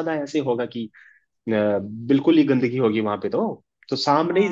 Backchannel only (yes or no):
yes